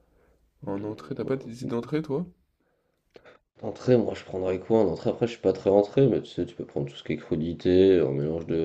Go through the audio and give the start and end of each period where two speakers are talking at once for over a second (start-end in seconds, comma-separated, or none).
none